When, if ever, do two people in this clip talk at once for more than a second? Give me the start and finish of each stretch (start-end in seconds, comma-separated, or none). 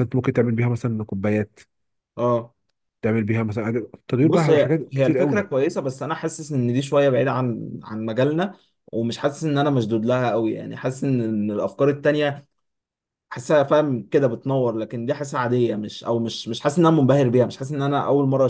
4.2-5.5